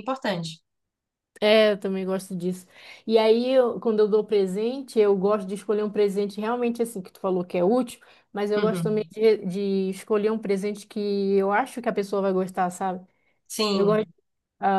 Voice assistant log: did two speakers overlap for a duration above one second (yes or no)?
no